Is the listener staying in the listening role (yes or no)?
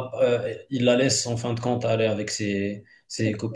yes